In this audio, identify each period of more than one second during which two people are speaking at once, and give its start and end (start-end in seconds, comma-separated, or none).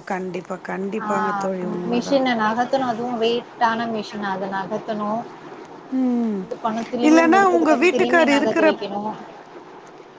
7.1-8.7